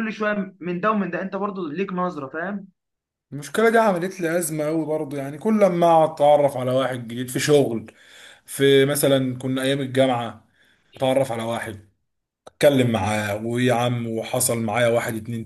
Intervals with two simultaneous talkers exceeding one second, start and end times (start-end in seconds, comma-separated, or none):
none